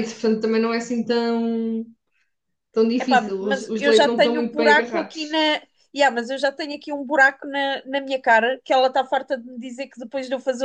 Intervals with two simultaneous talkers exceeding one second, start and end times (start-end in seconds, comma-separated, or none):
3.0-5.4